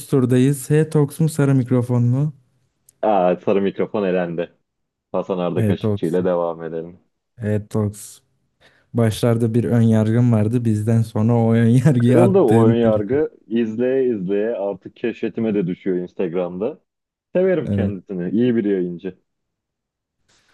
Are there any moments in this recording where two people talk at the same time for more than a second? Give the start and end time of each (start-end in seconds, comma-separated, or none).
12.0-13.2